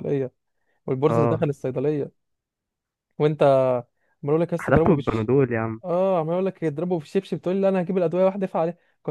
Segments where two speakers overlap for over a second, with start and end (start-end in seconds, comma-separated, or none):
none